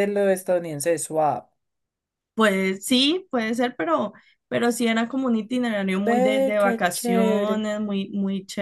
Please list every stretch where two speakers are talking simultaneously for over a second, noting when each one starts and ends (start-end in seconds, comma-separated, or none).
6.1-7.6